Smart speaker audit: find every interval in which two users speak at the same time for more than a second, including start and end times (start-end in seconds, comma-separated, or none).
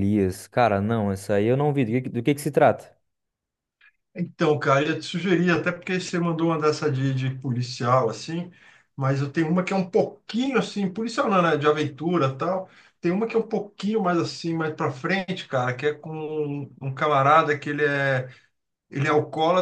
none